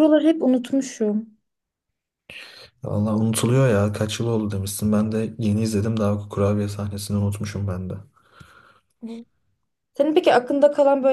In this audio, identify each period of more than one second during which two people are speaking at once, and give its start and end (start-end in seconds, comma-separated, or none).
none